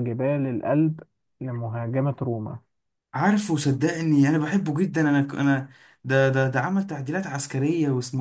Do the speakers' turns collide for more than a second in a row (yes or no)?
no